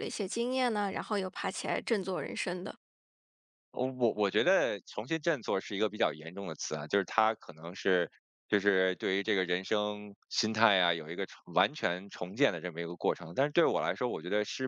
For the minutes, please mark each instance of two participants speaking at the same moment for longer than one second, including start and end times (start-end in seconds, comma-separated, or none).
none